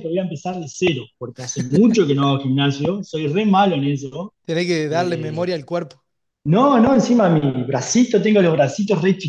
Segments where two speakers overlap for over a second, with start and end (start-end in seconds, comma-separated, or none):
none